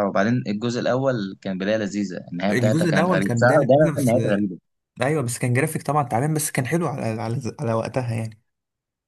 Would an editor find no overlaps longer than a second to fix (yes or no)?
no